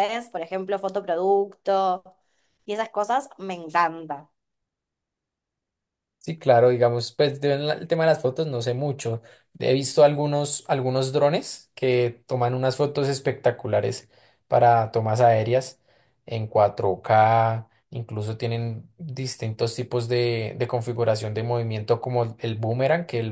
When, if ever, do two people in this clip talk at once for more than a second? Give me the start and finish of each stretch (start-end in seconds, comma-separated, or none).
none